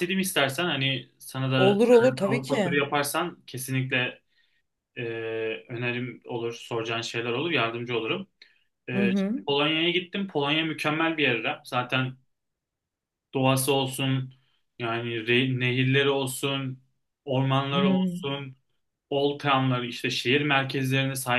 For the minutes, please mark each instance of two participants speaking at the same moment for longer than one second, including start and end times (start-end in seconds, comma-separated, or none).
1.6-2.8